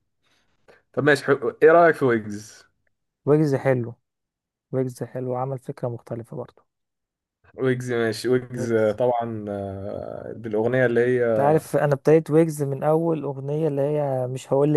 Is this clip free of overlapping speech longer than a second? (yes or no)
yes